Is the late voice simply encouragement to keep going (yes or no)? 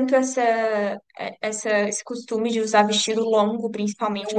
yes